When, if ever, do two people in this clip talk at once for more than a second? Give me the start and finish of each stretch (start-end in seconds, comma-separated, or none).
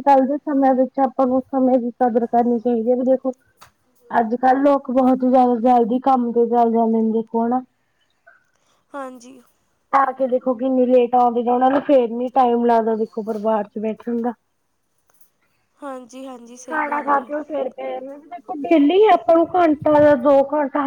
none